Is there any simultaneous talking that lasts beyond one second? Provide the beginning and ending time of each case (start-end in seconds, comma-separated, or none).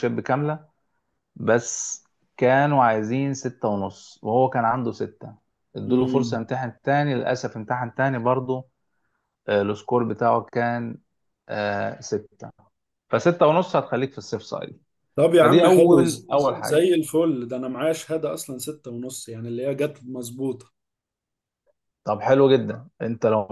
15.4-16.9